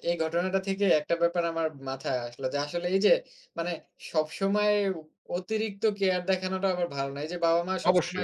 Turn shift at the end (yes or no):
no